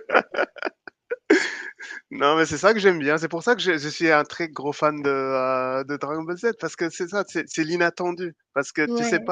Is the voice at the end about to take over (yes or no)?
no